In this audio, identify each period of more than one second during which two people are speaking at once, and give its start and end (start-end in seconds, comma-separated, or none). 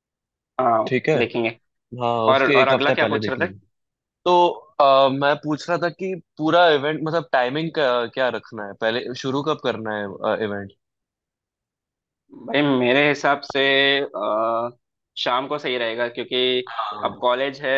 2.3-3.5